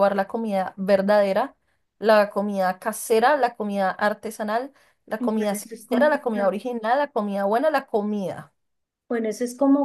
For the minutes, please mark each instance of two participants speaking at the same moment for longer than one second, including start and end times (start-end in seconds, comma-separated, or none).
5.2-6.5